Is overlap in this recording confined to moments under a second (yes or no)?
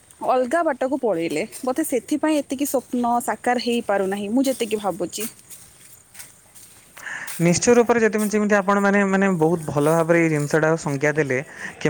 yes